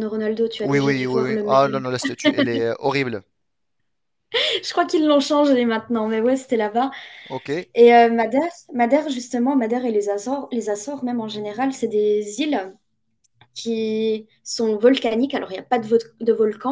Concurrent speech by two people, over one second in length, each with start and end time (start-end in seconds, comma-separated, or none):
0.6-1.8